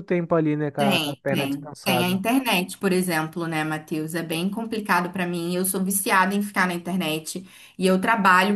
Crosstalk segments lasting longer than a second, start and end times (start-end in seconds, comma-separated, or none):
0.8-2.2